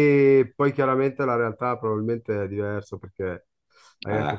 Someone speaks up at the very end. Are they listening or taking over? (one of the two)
listening